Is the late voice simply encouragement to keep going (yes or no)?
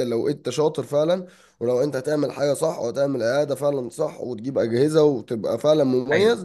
yes